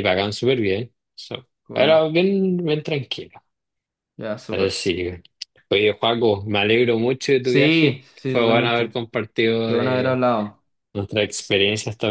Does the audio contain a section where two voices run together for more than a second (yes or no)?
yes